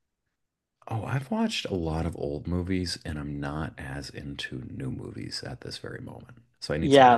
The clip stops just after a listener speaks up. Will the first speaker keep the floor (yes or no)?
no